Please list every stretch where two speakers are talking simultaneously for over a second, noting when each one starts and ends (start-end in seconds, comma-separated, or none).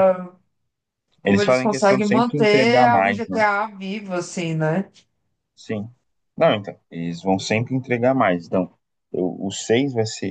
1.2-3.4